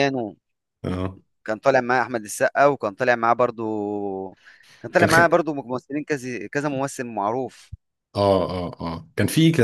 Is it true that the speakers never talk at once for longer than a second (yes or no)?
yes